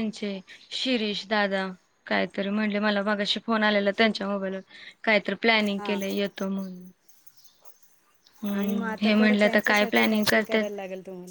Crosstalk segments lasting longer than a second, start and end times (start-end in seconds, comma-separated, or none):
8.5-10.6